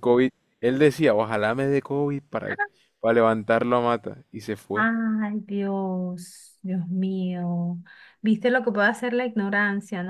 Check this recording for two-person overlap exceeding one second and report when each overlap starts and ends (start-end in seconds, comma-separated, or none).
none